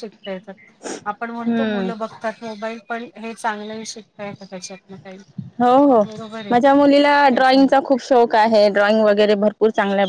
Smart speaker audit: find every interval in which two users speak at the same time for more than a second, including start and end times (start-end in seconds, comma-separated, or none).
none